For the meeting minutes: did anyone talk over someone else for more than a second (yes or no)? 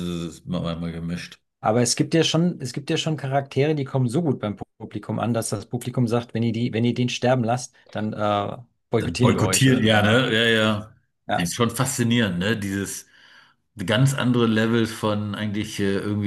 yes